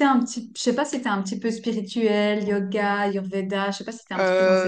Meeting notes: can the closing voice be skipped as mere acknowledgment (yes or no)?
no